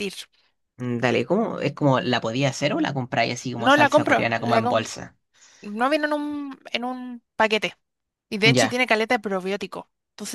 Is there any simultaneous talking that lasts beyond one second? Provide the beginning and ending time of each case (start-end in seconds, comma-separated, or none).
3.6-4.9